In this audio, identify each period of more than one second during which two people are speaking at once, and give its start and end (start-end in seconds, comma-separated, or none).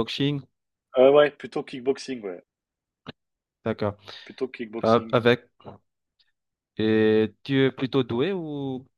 none